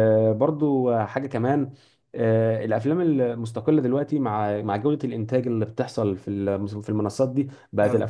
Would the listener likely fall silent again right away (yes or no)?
yes